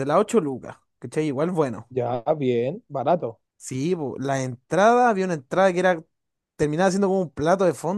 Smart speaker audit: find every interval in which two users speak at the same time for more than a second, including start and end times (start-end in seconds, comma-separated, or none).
none